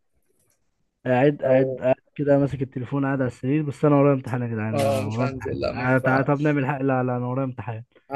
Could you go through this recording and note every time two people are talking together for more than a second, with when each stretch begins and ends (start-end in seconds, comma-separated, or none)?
4.7-6.6